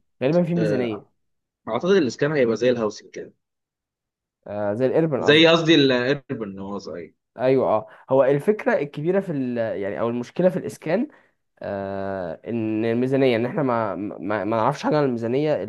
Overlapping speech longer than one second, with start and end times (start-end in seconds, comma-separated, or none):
none